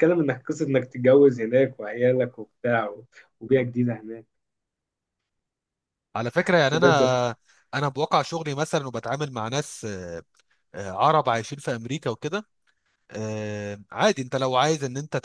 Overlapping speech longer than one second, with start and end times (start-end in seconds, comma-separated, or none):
none